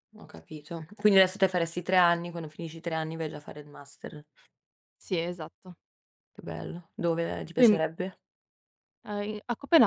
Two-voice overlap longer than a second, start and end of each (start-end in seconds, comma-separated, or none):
none